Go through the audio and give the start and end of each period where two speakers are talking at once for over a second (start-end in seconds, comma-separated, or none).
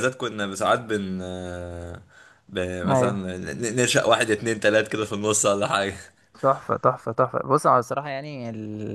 none